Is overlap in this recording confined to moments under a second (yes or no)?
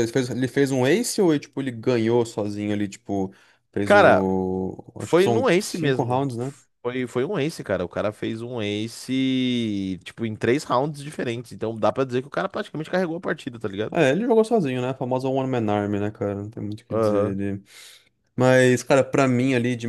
no